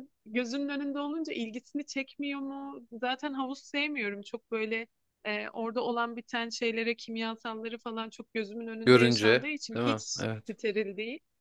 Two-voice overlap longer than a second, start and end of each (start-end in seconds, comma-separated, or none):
8.8-10.5